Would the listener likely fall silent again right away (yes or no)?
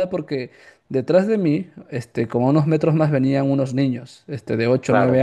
yes